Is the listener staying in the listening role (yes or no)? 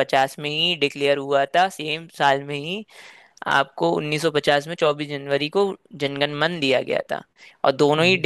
yes